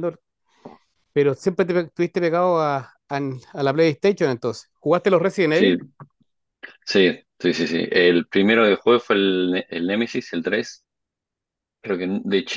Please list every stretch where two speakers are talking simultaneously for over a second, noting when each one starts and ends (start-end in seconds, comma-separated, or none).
none